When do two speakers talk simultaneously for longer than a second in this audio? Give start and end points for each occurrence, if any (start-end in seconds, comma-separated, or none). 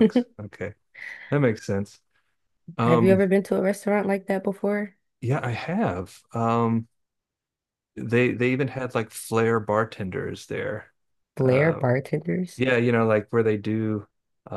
none